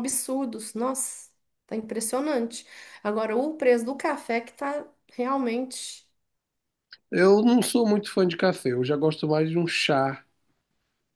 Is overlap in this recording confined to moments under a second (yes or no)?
yes